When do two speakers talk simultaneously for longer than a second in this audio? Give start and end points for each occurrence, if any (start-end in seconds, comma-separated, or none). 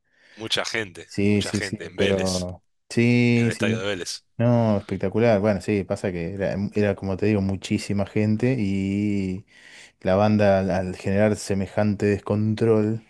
1.0-2.5